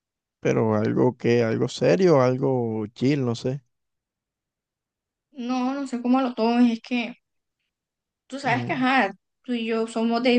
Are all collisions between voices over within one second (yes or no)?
yes